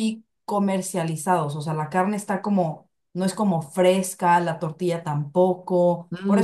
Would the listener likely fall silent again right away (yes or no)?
no